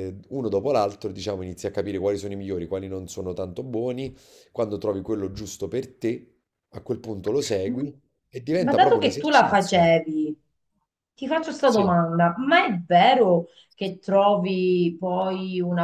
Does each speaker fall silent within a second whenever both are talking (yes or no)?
no